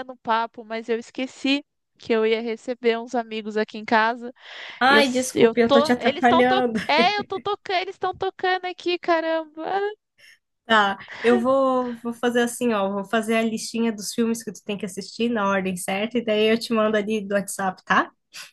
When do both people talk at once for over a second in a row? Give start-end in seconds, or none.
4.9-6.8